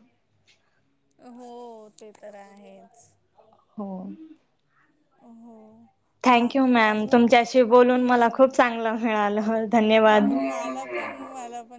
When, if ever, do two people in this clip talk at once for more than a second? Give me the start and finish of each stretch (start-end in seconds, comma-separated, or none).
6.3-8.5